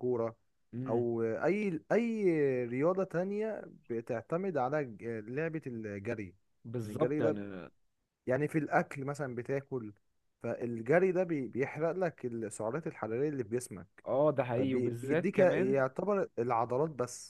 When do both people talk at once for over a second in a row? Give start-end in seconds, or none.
14.6-15.8